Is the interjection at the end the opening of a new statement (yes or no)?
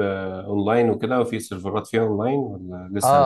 yes